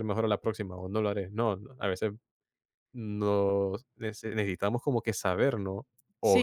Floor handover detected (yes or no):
no